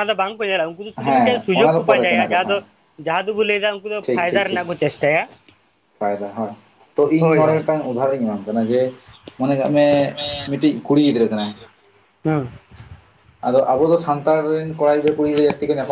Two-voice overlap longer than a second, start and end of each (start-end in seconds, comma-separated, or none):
1.0-2.5